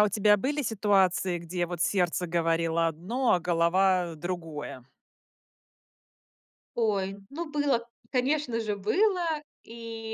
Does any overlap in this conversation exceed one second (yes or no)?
no